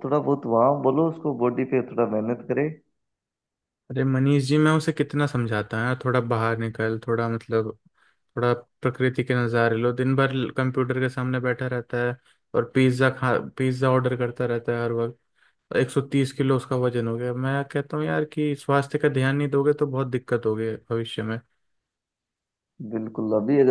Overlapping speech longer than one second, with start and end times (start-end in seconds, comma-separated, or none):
none